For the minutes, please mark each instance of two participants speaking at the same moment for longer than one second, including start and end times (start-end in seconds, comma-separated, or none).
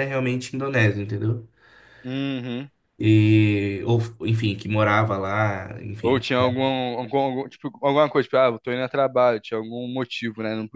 none